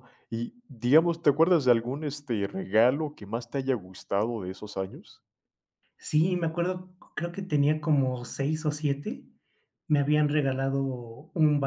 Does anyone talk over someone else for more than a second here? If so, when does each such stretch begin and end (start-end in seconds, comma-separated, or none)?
none